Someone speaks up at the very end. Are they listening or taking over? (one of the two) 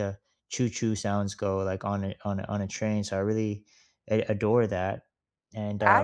taking over